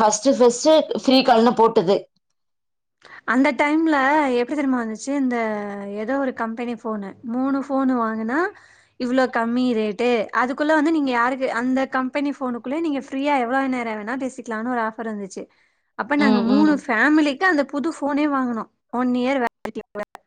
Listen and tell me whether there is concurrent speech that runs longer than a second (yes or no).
no